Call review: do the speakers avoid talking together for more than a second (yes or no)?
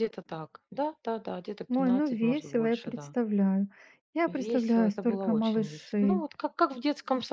no